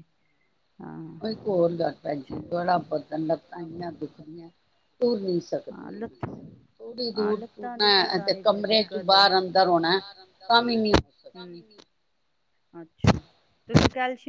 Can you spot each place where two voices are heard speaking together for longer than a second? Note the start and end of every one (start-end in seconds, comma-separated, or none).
7.2-9.4